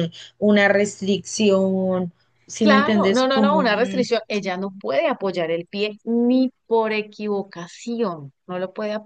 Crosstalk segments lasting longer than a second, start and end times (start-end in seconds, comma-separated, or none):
2.6-4.1